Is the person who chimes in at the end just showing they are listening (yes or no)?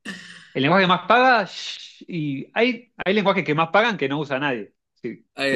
yes